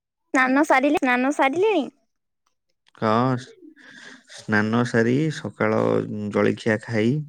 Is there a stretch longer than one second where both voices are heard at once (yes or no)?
no